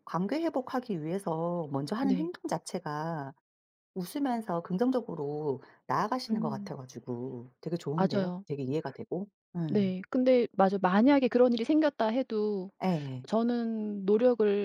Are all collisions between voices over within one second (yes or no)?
yes